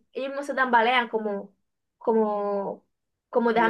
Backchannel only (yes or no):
no